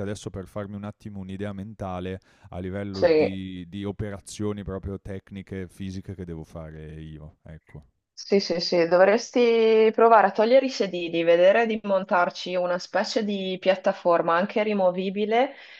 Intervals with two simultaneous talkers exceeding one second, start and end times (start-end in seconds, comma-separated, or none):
none